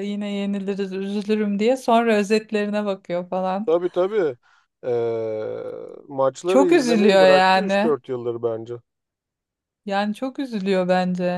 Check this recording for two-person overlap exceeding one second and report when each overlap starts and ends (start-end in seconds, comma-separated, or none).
6.5-8.0